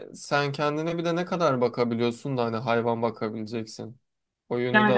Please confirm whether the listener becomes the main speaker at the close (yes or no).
yes